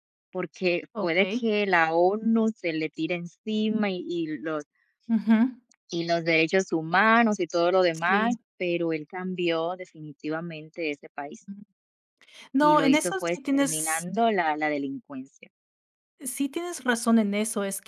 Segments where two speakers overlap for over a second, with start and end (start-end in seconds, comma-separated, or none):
12.6-14.1